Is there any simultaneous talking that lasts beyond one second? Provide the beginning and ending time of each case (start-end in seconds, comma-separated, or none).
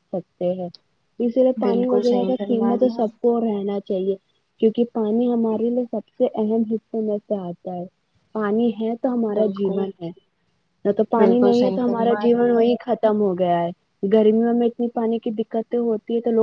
1.6-3.1, 11.2-12.6